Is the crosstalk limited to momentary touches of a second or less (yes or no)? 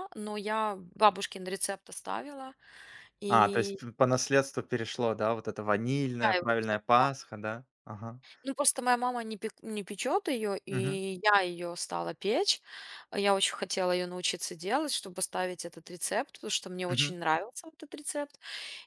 yes